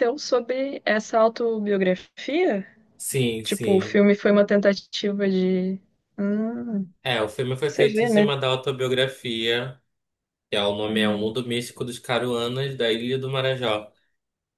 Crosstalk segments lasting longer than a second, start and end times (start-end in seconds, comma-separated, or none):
none